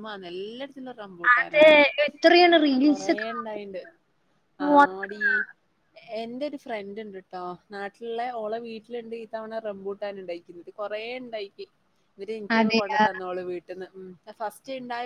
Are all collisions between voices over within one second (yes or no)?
yes